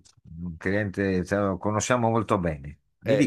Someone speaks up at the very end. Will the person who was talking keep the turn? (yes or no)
no